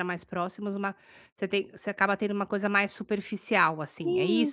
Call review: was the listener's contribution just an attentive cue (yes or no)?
no